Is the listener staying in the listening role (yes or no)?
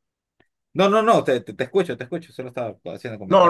no